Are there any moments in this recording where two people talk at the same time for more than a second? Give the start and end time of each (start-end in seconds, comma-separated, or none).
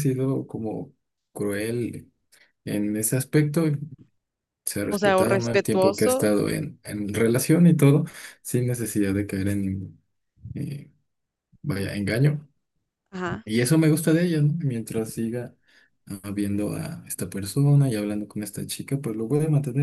4.9-6.3